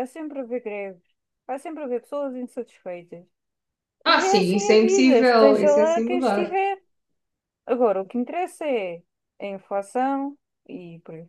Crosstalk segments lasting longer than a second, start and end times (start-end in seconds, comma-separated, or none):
4.1-6.6